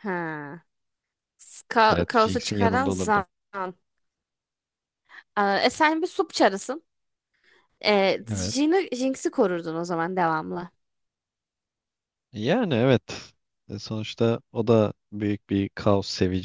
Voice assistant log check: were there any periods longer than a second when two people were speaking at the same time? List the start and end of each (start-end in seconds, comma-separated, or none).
1.9-3.2